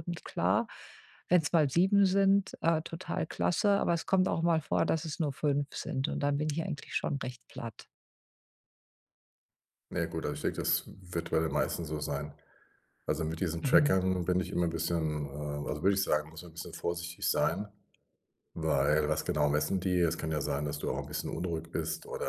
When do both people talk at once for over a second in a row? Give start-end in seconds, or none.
none